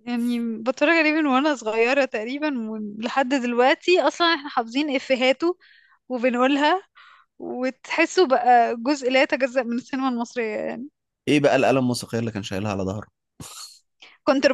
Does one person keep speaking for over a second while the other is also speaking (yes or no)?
no